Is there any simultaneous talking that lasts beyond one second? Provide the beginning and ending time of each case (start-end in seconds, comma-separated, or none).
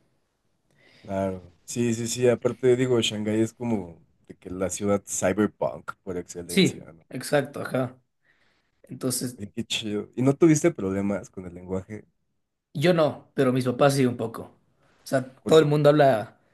none